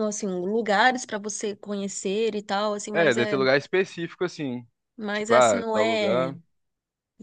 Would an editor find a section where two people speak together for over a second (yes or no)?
yes